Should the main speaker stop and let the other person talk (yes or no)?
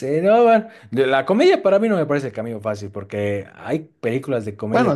no